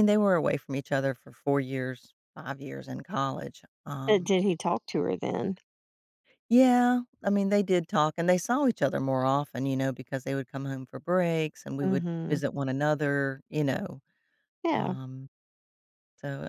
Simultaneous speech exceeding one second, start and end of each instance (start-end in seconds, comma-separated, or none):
none